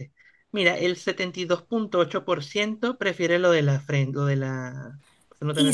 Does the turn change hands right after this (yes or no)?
yes